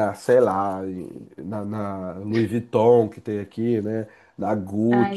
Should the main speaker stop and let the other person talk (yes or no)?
no